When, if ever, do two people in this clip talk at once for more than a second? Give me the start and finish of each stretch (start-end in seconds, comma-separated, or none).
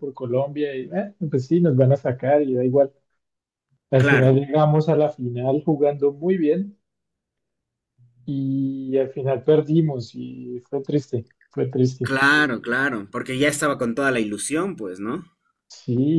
none